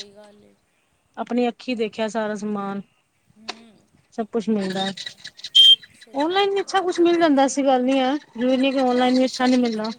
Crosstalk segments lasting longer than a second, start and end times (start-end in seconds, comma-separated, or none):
6.2-7.6